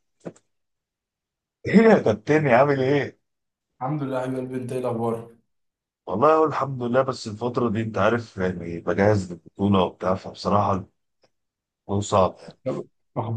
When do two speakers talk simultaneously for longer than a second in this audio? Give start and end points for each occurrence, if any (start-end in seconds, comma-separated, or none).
none